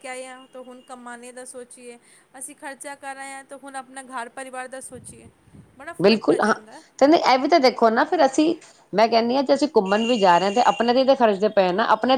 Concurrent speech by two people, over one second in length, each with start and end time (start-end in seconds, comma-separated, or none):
none